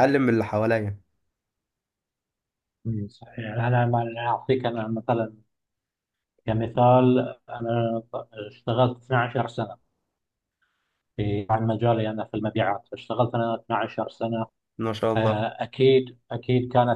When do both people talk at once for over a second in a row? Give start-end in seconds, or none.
none